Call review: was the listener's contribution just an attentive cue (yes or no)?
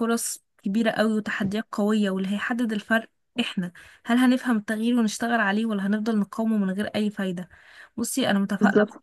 yes